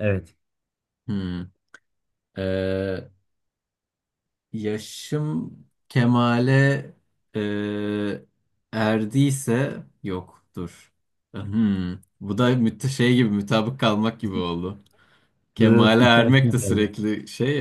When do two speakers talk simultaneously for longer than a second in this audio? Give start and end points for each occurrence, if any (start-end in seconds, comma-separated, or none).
15.6-16.9